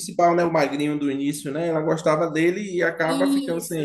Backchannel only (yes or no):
no